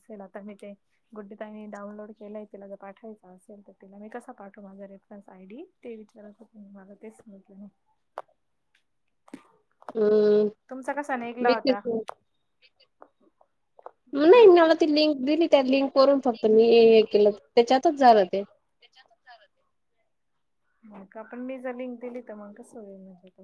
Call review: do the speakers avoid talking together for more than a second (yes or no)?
yes